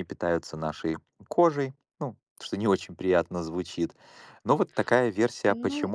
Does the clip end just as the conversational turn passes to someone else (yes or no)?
no